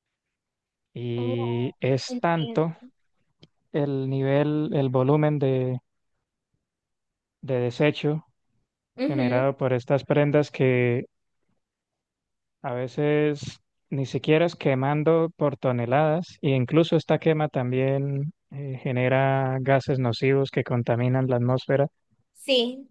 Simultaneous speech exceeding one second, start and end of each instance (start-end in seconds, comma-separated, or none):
1.2-2.6